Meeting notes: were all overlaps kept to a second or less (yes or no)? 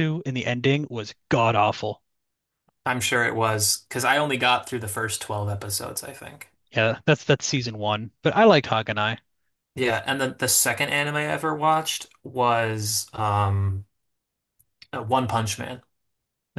yes